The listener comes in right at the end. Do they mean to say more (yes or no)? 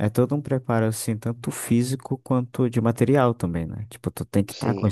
no